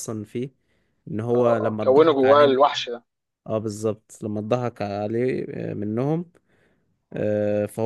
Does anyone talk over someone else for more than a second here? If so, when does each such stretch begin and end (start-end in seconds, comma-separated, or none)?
1.3-2.6